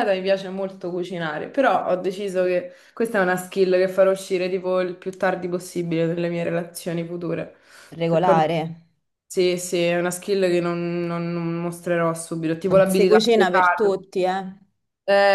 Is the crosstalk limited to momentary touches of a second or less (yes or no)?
no